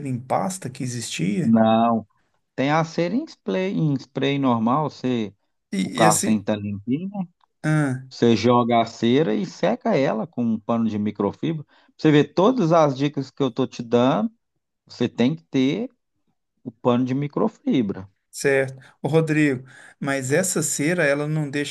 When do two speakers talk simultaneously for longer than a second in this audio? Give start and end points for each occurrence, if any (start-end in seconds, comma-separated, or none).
none